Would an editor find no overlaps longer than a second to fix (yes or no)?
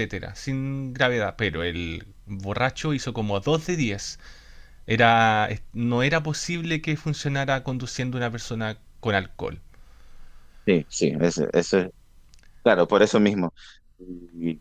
yes